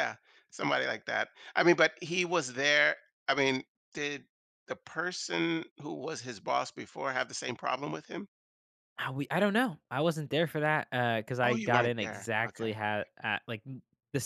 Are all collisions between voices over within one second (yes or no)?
no